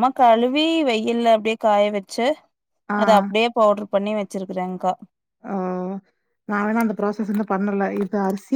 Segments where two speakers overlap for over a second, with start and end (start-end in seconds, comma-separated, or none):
none